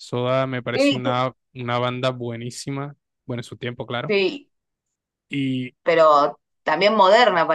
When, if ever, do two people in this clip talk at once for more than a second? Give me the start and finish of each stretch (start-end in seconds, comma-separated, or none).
none